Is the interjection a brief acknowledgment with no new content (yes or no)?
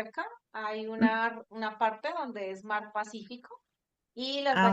yes